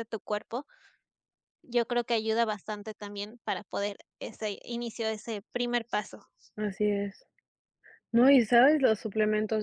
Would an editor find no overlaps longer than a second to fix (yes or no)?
yes